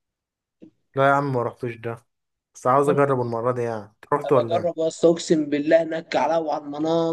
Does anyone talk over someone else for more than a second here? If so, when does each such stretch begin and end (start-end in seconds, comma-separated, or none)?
none